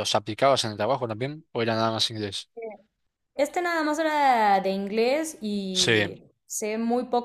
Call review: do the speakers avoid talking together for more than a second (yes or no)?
yes